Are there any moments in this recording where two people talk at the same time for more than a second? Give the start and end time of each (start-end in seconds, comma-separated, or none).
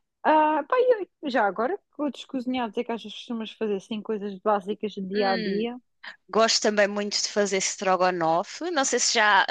none